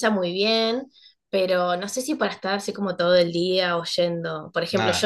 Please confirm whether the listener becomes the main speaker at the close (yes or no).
no